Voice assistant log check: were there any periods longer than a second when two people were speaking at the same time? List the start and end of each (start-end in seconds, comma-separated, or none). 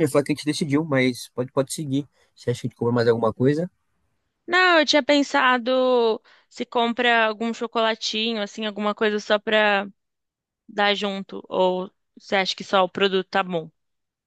none